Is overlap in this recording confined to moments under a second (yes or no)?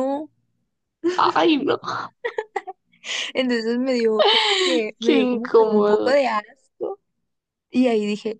no